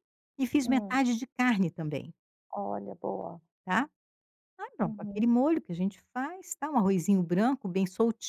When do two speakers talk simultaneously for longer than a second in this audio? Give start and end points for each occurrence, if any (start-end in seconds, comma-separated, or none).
none